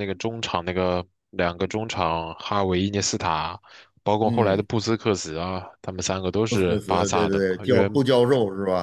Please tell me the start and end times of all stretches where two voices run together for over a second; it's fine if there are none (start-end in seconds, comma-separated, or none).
6.5-8.0